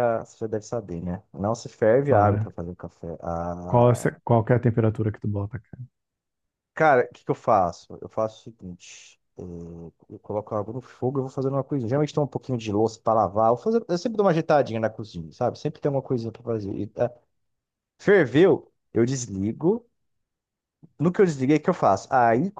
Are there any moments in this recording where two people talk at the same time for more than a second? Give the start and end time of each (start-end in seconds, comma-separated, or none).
none